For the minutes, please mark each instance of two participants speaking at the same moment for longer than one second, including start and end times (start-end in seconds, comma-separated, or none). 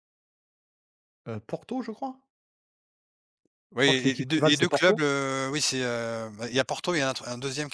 3.8-5.1